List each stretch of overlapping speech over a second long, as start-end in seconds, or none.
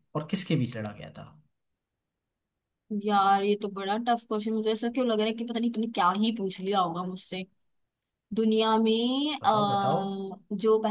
none